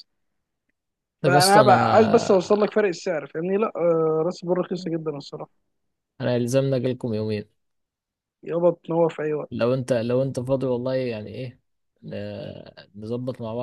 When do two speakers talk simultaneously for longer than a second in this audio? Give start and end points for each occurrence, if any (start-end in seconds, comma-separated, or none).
1.2-2.7